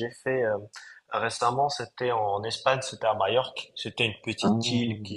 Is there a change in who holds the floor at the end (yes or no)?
no